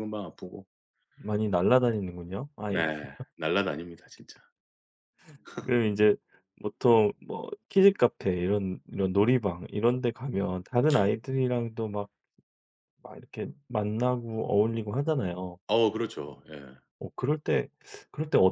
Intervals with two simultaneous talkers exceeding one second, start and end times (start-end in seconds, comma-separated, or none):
none